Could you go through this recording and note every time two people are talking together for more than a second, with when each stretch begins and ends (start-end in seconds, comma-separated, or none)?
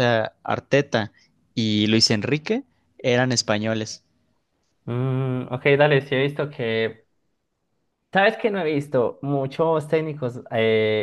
none